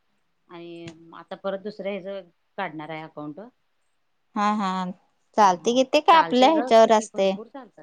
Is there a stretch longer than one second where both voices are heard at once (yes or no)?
yes